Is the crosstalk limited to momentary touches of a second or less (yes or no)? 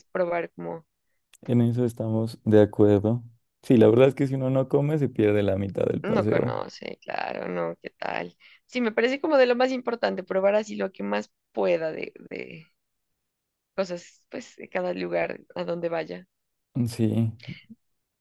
yes